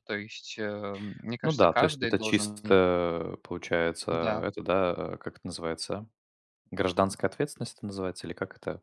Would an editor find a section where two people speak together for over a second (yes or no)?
yes